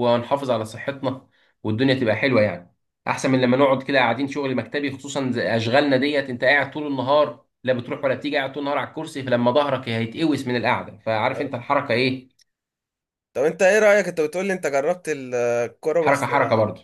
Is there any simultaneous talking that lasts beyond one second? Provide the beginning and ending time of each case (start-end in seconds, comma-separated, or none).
none